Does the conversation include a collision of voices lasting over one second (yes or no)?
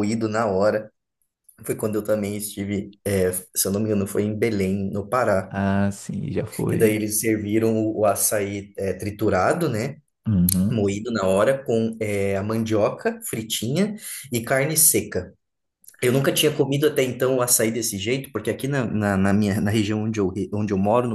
no